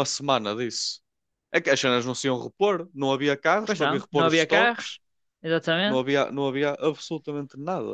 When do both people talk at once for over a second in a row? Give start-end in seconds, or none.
3.6-5.0